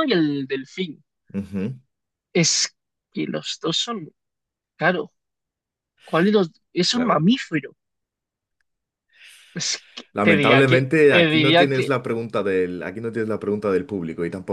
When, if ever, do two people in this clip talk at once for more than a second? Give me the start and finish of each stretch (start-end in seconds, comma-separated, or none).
10.1-11.9